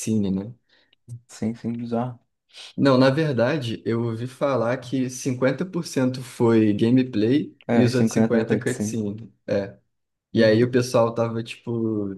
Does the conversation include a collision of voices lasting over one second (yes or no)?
yes